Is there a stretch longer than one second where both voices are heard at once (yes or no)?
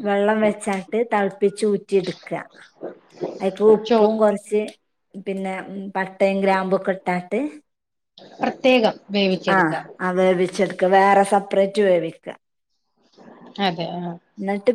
no